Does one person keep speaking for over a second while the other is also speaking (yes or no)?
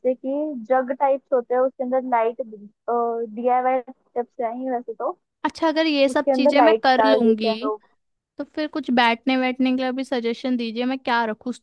yes